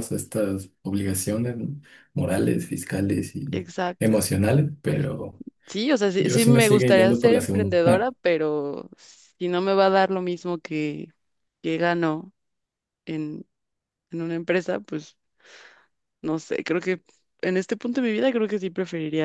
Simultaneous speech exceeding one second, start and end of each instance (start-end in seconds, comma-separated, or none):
6.2-8.1